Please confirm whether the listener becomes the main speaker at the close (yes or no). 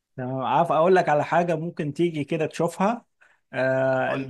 no